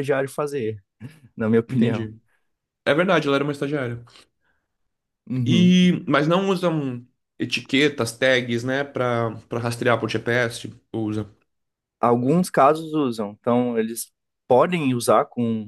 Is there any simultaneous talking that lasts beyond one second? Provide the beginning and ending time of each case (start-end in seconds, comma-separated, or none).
none